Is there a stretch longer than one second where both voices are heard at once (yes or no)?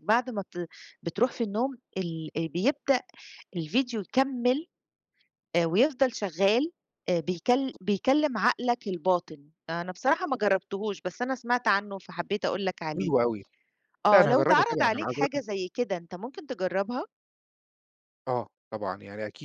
yes